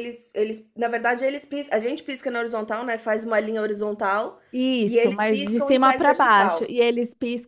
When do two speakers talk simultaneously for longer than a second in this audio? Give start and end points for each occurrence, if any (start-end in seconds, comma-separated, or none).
4.9-6.7